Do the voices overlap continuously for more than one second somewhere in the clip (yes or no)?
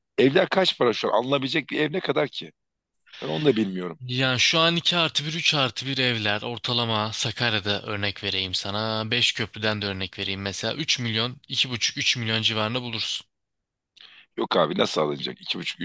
no